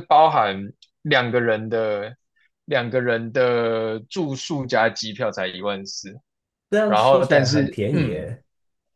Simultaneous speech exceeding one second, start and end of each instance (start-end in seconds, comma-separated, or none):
6.8-8.3